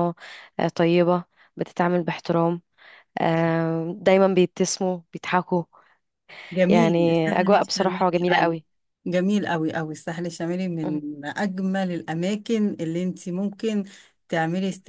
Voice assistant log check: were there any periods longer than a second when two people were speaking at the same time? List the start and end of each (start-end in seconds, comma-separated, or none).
6.7-8.5